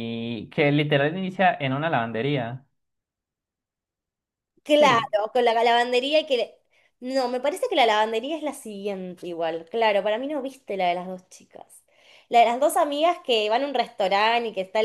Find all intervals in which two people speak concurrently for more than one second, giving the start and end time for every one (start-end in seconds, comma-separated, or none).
none